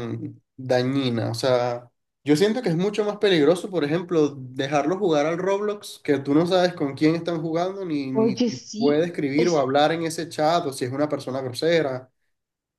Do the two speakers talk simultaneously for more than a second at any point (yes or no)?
yes